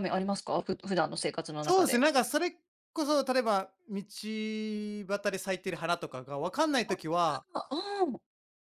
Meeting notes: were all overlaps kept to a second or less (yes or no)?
yes